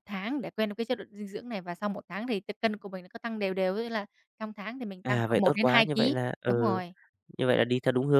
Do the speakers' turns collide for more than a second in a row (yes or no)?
yes